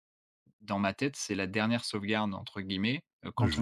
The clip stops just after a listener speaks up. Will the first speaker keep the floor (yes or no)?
yes